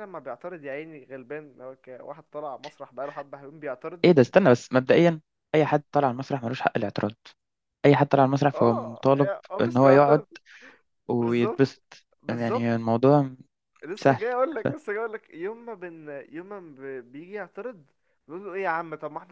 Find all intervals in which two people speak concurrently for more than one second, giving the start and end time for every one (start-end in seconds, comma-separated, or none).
8.5-10.2